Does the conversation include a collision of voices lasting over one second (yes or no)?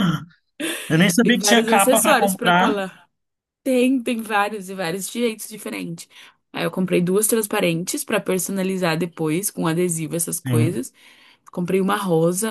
yes